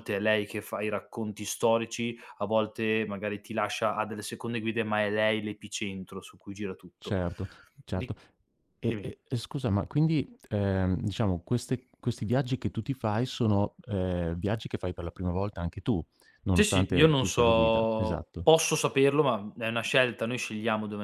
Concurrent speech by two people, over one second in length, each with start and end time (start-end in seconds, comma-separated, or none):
16.5-18.5